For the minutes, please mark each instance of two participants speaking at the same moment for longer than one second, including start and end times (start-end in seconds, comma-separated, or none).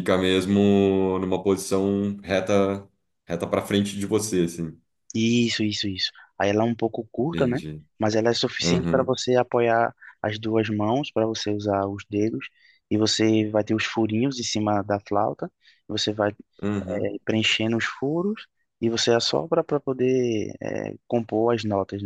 none